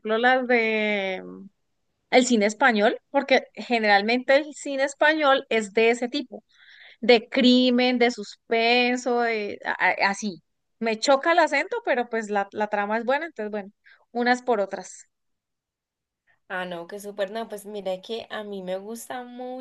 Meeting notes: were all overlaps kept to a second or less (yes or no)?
yes